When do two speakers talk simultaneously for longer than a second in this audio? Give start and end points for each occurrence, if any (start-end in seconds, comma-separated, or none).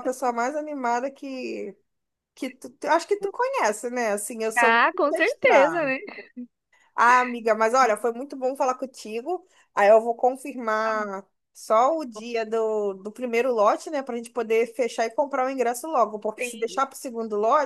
4.6-5.9